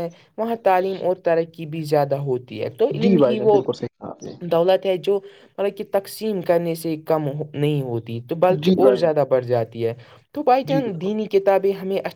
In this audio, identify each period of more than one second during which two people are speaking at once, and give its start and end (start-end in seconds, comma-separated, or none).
none